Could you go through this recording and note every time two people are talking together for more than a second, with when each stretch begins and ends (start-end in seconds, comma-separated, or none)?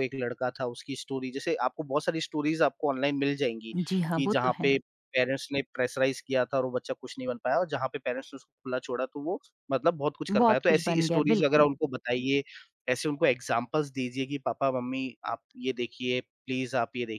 10.3-11.7